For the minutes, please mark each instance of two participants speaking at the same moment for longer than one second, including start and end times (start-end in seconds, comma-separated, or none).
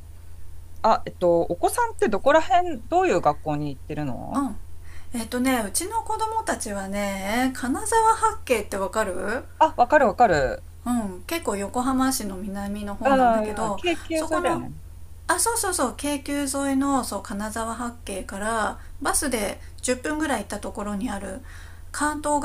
13.0-14.6